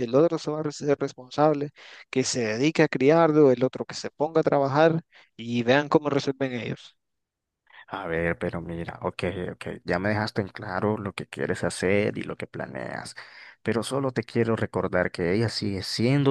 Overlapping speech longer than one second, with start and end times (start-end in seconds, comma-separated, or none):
none